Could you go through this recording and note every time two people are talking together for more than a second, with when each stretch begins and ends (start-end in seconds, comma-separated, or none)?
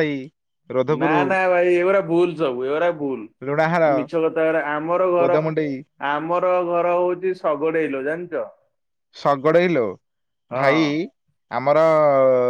none